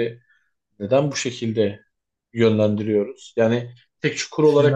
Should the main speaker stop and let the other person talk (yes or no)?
no